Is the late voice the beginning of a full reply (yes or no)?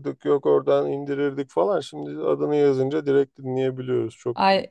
yes